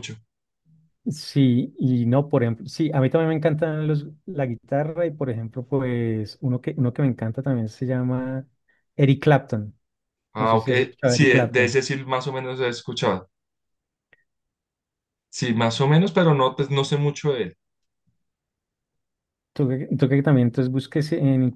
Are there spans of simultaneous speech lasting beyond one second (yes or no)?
yes